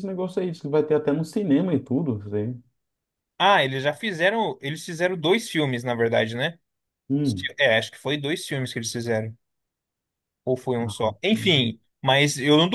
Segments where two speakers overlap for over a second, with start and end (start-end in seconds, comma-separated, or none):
none